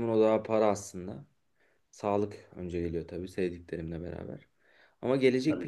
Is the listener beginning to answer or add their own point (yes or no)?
no